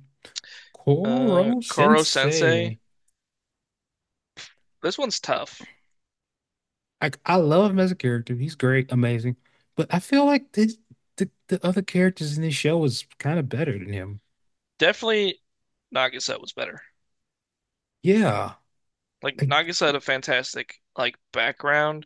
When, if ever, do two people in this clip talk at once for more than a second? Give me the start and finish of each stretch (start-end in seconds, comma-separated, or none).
1.0-2.8